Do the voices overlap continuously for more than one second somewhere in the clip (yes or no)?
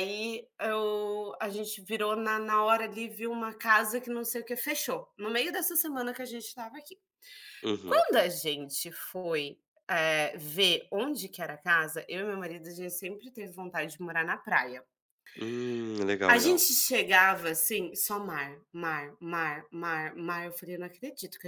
no